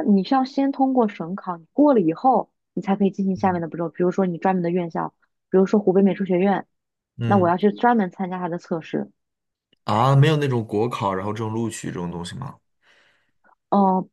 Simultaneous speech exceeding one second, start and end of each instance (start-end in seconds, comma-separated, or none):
none